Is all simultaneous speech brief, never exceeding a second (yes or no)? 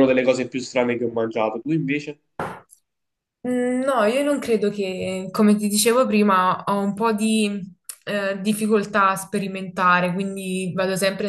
yes